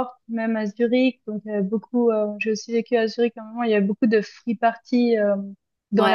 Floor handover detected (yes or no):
no